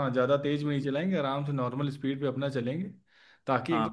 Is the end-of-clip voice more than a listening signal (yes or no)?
yes